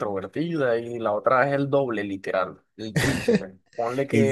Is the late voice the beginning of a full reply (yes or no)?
no